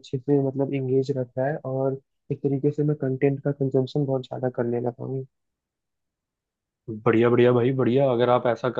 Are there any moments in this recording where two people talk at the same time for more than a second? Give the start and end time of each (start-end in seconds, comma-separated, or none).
none